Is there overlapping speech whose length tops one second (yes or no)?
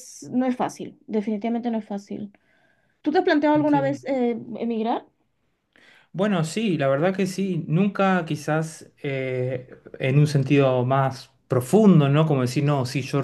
no